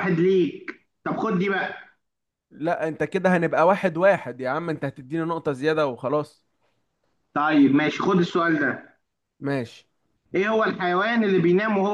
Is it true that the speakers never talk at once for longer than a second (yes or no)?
yes